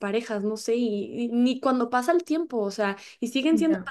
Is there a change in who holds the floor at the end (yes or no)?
no